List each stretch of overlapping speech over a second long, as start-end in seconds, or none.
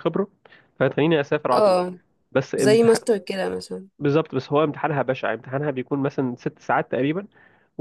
none